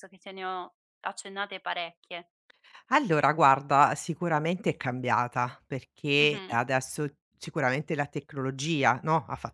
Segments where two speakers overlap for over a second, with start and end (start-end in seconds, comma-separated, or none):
none